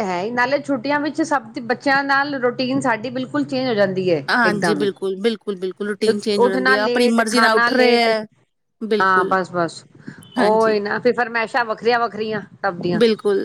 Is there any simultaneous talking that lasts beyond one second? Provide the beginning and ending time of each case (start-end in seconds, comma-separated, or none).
6.1-8.1